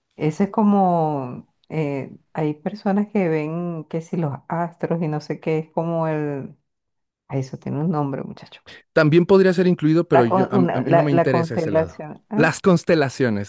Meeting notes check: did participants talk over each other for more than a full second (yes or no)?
yes